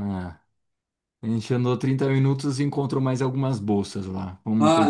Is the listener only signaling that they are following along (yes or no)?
no